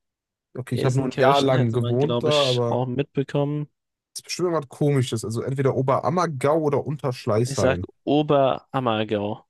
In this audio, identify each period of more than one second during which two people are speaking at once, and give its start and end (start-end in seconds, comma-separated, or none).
0.7-2.8